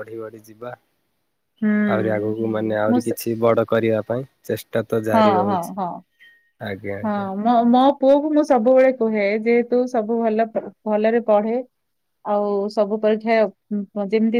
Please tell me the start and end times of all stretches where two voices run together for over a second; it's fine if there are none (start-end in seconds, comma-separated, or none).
none